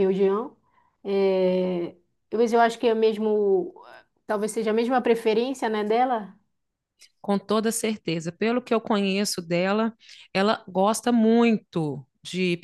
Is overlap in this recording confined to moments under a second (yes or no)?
yes